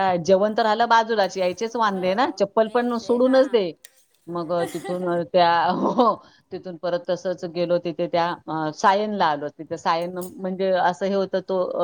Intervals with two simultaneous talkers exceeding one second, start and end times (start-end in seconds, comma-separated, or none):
1.9-3.6